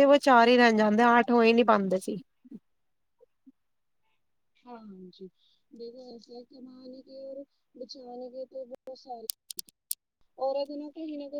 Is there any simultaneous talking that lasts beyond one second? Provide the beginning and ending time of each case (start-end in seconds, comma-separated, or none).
none